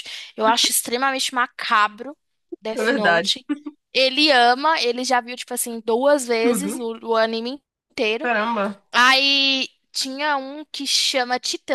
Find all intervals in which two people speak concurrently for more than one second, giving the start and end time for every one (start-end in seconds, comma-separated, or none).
none